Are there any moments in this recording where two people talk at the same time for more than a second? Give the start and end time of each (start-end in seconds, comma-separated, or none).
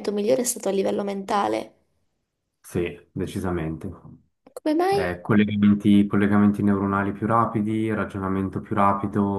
none